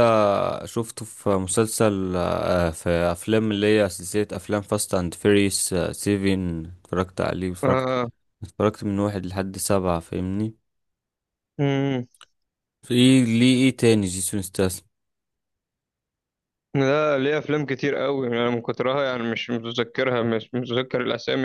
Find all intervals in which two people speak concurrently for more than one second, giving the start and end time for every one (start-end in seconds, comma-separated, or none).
none